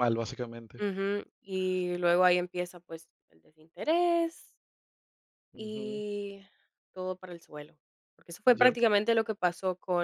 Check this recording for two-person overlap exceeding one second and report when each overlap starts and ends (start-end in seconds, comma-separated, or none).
none